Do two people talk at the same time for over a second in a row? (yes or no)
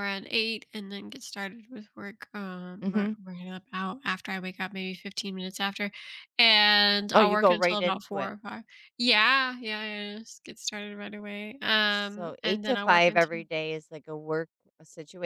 yes